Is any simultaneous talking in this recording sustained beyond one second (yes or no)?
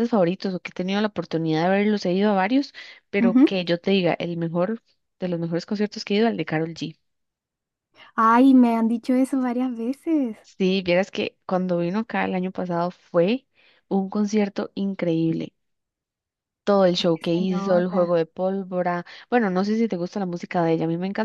yes